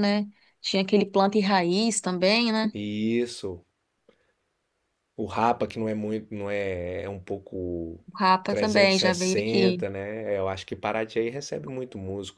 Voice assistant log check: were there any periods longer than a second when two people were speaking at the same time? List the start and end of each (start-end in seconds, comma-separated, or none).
8.5-9.8